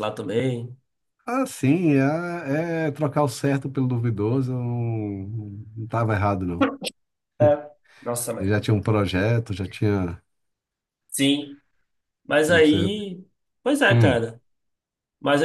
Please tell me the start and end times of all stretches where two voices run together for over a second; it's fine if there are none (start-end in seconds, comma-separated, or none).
none